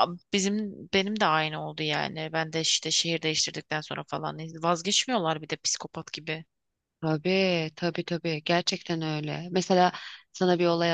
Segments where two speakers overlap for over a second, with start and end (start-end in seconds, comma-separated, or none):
none